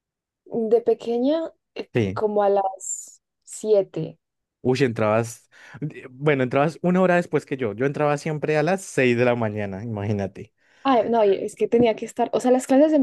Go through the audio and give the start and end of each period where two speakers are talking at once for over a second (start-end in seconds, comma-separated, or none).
none